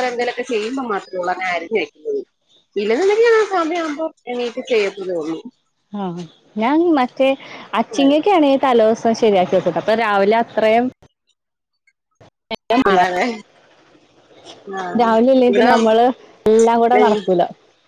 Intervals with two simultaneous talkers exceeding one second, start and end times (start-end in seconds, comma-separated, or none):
none